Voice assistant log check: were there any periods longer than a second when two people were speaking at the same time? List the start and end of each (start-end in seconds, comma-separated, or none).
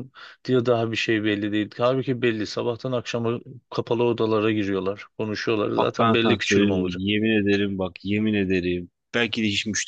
5.8-7.0